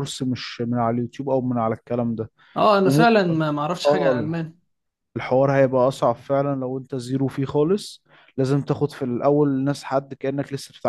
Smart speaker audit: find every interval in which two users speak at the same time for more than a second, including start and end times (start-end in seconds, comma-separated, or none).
none